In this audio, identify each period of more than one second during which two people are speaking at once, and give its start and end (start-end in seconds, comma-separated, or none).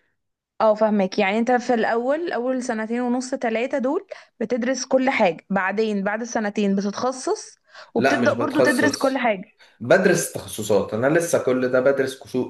8.0-9.3